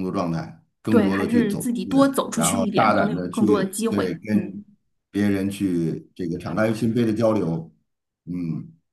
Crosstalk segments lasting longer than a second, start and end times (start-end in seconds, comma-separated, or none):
0.9-4.6